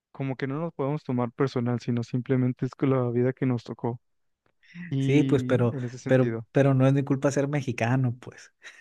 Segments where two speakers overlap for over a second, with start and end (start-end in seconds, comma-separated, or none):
5.0-6.5